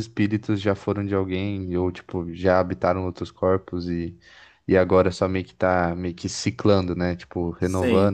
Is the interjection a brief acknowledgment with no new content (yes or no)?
no